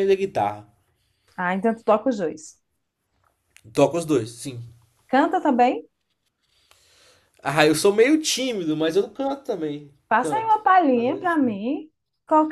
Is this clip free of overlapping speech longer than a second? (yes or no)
no